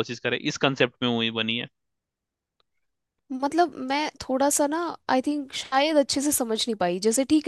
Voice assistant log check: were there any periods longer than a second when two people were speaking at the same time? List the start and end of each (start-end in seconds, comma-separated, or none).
none